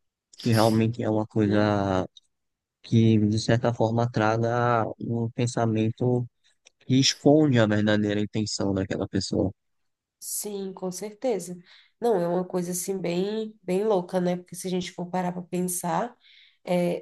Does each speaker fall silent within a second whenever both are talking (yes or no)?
yes